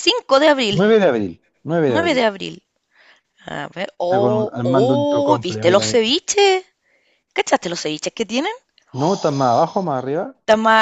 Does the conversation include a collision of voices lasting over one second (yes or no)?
yes